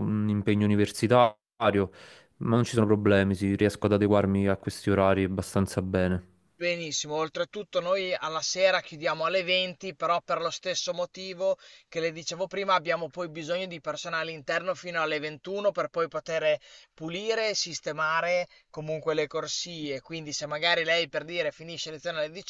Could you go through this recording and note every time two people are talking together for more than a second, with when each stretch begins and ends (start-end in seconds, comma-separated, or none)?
none